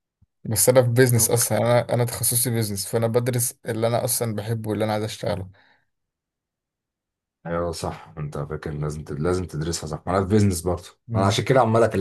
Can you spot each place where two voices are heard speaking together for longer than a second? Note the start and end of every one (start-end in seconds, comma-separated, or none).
none